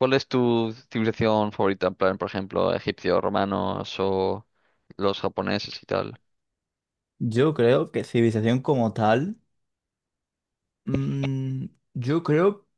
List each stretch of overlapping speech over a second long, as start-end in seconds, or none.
none